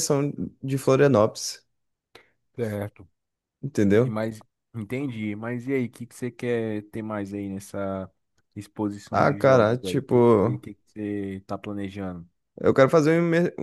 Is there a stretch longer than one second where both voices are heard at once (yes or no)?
yes